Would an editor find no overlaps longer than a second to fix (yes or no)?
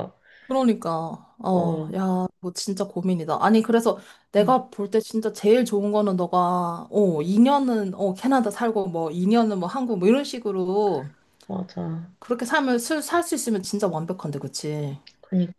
yes